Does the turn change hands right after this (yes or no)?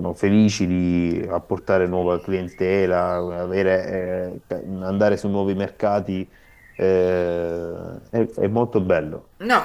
yes